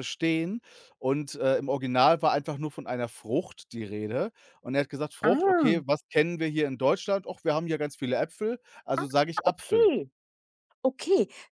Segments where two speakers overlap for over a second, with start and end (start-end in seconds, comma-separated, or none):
none